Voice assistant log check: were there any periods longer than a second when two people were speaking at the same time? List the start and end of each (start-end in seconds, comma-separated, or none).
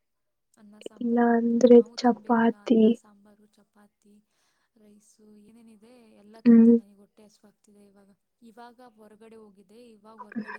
1.0-2.8